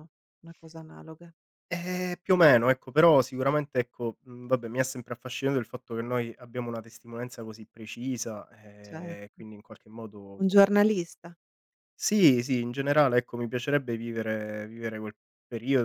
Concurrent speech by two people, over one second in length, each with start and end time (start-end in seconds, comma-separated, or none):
none